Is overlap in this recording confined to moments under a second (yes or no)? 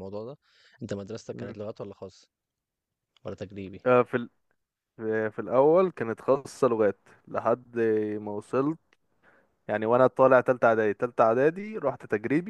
yes